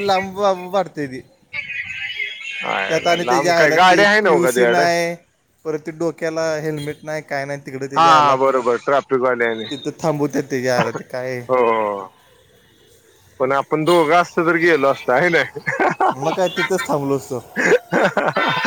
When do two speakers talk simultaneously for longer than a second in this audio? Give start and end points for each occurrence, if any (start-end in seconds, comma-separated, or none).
2.9-4.8